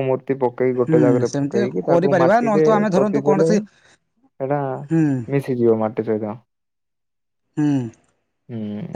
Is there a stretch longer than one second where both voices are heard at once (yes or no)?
yes